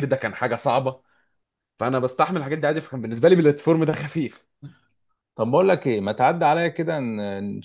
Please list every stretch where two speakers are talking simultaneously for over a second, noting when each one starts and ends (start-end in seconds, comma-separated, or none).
none